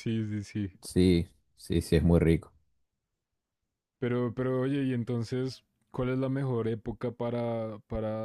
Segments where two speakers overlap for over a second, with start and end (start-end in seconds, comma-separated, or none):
none